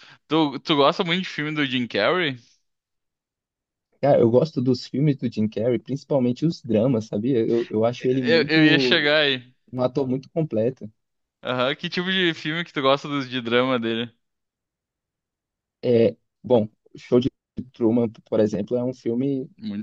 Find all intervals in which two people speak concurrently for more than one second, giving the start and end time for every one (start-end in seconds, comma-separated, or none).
none